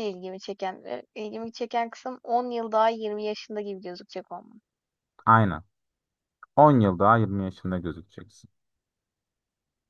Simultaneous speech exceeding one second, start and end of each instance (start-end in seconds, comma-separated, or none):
none